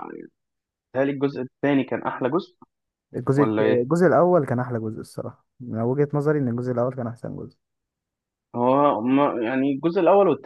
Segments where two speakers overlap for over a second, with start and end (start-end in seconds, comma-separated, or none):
none